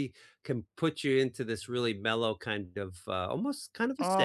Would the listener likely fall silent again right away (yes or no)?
no